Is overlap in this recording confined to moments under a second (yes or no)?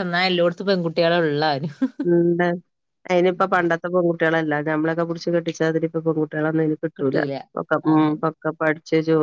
yes